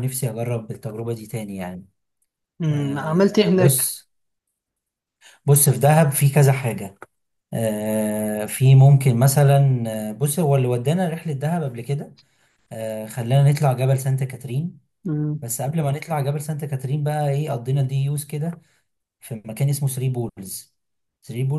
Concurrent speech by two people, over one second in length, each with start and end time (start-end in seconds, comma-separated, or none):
2.7-3.9